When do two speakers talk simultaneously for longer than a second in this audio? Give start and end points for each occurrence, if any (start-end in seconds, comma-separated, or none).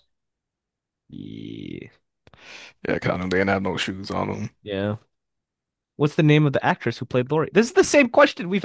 none